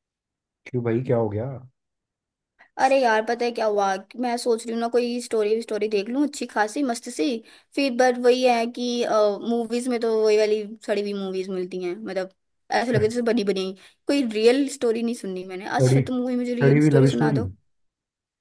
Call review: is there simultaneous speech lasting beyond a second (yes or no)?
yes